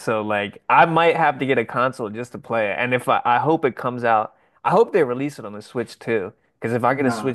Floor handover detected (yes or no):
yes